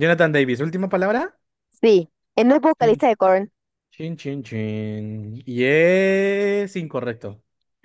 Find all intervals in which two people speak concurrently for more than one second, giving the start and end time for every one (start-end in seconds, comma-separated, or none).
none